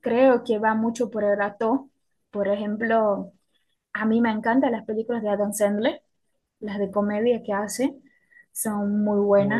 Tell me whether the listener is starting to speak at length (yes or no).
no